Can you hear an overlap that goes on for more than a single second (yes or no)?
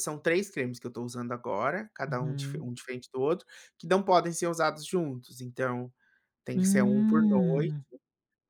yes